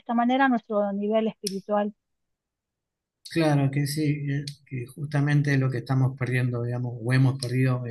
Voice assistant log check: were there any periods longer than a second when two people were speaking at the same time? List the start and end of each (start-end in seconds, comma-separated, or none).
none